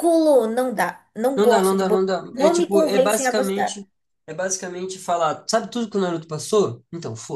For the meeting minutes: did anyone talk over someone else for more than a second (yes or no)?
yes